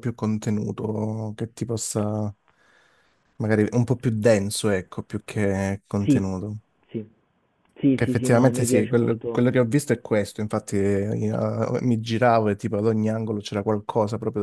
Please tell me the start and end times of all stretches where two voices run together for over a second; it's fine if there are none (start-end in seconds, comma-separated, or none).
8.0-9.4